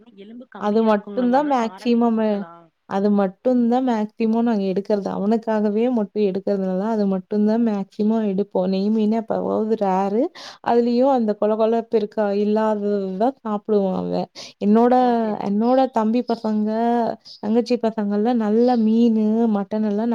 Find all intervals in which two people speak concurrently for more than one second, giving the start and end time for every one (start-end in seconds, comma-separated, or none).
0.7-2.2